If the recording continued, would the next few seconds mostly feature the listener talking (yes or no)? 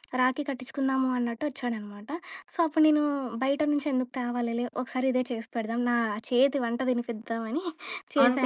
yes